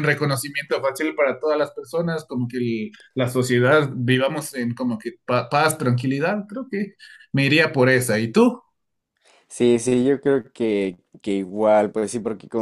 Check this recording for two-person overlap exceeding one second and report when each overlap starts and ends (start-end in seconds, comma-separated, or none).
none